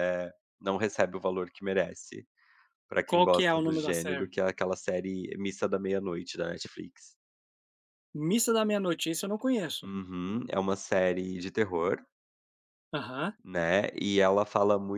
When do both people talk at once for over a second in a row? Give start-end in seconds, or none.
3.1-4.3